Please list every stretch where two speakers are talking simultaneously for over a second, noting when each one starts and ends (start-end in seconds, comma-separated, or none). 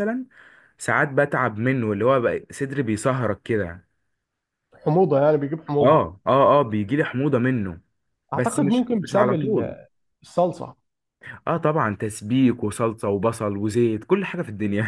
8.3-9.8